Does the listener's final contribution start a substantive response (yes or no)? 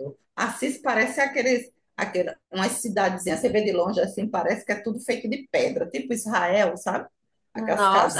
yes